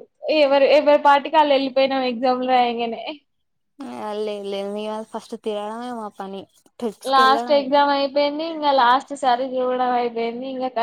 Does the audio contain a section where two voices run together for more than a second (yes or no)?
no